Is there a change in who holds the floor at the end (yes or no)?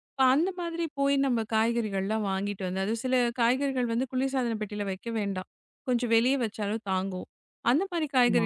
no